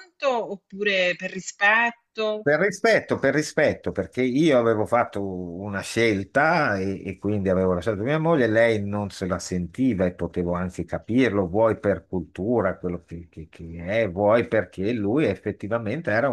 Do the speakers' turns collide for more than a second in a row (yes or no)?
no